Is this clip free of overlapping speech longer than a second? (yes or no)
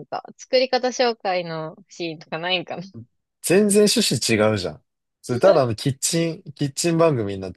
yes